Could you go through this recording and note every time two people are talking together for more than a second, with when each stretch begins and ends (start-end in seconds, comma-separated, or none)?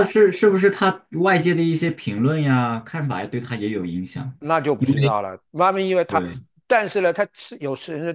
none